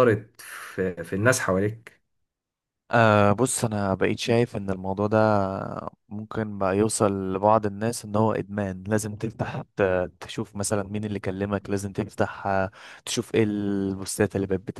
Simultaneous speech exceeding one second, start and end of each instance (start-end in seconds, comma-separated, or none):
none